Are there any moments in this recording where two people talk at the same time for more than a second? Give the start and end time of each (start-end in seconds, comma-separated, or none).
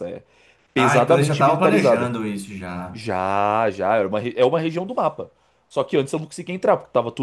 0.8-2.1